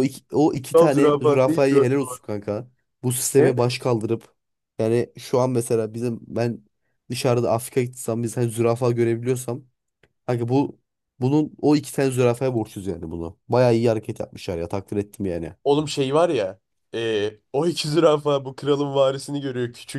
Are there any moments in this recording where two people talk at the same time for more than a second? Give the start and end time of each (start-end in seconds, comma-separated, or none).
0.7-2.2